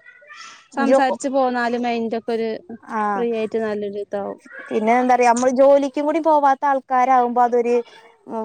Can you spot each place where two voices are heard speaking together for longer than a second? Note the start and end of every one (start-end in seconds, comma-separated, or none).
none